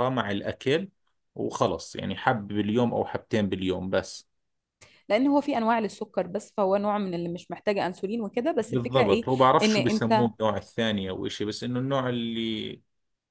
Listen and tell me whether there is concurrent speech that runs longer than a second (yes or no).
yes